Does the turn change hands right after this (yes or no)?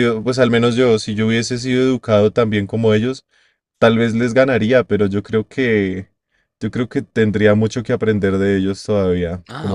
yes